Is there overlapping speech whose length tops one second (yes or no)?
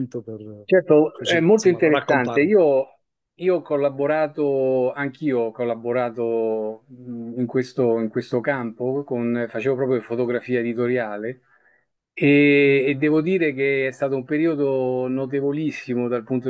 yes